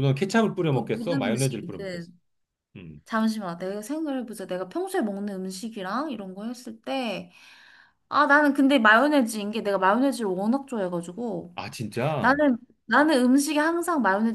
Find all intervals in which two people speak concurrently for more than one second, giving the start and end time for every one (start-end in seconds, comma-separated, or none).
0.7-2.1